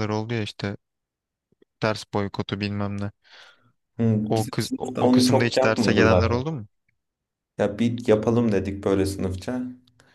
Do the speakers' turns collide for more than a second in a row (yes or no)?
yes